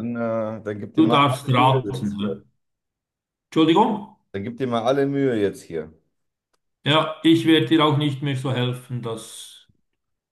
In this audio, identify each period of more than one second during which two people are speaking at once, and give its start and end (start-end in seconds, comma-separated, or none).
1.0-2.4